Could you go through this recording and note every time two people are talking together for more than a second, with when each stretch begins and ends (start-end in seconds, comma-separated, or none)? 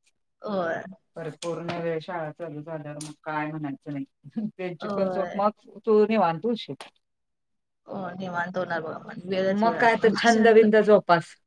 none